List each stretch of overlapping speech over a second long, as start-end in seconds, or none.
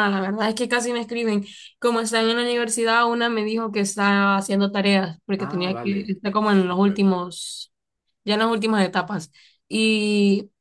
5.4-7.1